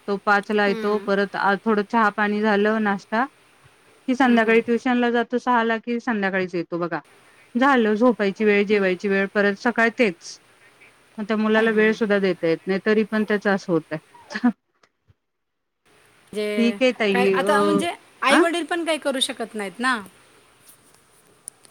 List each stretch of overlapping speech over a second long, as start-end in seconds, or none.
none